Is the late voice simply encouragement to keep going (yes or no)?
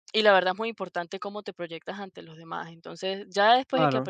yes